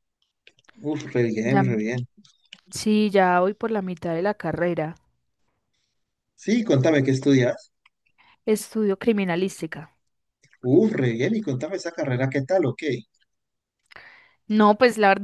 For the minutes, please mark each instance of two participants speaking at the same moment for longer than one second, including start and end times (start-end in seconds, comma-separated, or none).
none